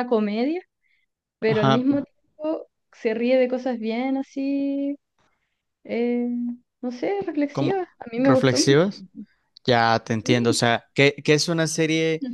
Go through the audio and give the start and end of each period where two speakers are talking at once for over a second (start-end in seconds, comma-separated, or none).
7.5-8.9